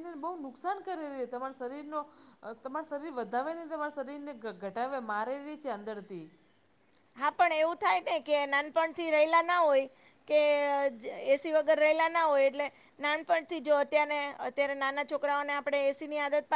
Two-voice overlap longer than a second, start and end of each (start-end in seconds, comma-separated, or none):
none